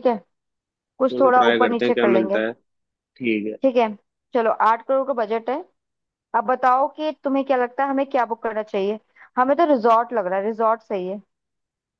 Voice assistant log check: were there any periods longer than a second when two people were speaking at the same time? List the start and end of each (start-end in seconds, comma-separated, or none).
1.1-2.4